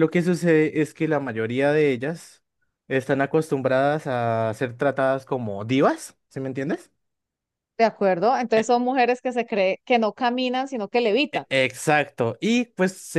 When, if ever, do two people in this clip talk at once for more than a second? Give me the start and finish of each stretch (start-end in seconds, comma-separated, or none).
none